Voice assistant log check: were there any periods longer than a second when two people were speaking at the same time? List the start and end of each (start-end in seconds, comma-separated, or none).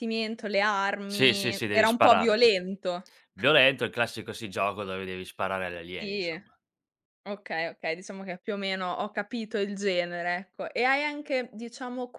1.1-2.4